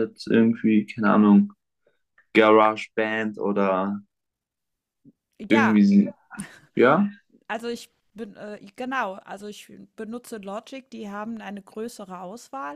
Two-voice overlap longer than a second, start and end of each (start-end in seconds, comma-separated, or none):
none